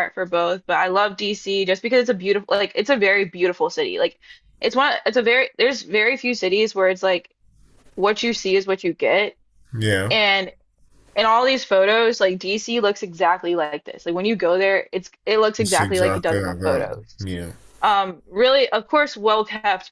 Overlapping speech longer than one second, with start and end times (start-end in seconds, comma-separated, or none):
15.6-17.2